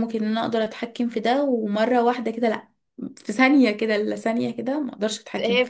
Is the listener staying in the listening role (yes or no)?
no